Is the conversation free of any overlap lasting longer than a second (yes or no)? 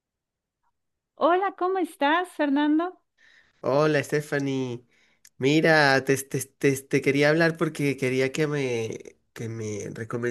yes